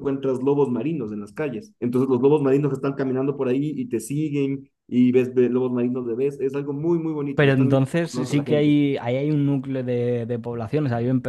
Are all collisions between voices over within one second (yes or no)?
no